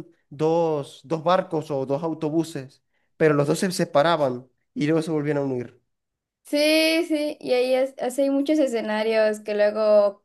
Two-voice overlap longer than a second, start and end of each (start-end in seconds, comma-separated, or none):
none